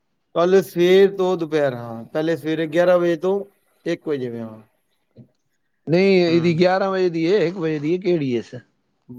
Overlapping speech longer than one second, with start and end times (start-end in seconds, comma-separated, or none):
none